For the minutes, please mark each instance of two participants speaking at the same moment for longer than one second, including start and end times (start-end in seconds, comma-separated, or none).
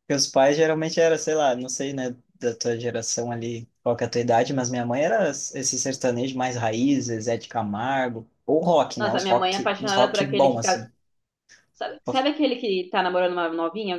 9.0-10.8